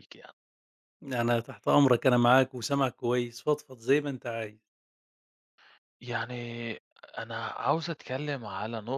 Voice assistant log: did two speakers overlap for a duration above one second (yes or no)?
no